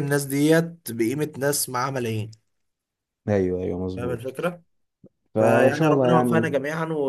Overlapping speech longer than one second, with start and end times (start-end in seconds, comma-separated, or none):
5.4-6.6